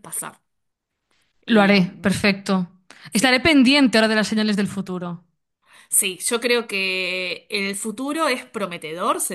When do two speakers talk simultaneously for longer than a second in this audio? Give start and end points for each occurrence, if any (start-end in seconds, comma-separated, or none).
none